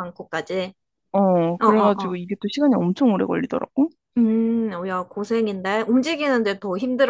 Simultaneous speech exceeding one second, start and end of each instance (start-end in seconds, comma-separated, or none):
none